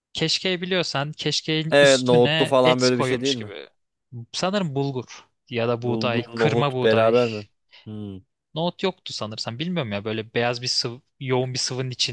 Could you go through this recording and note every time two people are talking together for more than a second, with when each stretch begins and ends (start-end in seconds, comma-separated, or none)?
1.7-3.5, 5.8-7.1